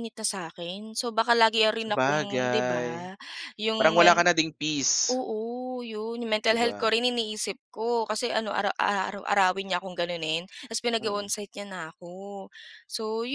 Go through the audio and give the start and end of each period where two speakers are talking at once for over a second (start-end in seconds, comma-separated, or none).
1.8-3.1